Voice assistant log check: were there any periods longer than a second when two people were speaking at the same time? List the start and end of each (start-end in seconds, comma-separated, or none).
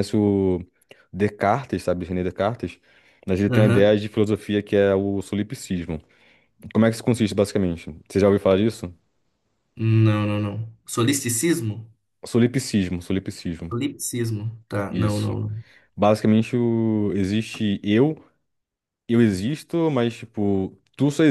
none